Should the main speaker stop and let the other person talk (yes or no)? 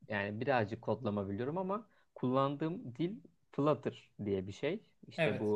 no